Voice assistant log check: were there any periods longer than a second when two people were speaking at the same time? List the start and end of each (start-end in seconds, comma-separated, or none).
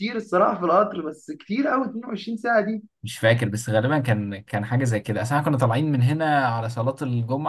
none